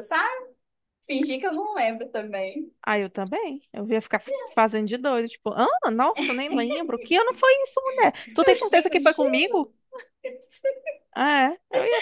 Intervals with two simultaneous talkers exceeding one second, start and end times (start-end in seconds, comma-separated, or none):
8.4-9.6